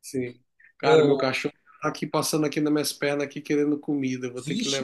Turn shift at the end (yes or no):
yes